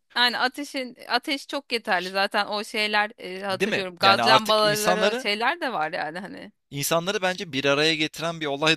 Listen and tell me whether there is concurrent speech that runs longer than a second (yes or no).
yes